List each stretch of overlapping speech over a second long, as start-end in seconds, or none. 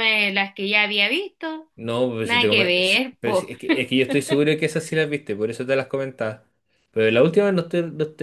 2.2-3.5